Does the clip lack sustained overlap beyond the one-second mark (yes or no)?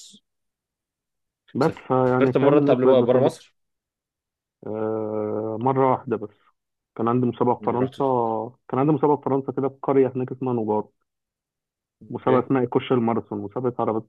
no